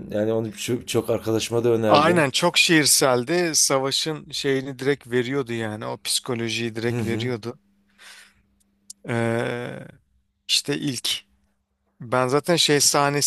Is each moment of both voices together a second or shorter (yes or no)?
yes